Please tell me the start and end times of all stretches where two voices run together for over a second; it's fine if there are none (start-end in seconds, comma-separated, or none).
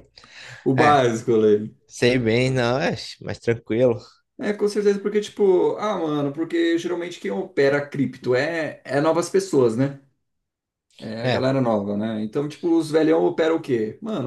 none